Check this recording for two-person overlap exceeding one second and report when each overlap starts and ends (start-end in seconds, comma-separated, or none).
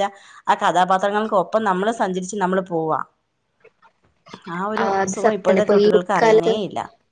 5.0-6.5